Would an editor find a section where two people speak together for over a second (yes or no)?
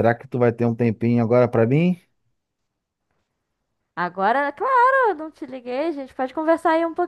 no